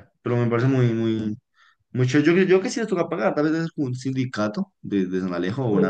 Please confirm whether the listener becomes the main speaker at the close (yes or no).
no